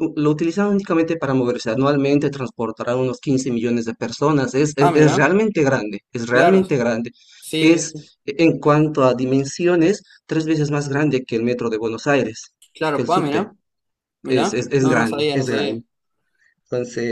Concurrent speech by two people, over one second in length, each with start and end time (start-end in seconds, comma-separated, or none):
14.3-15.8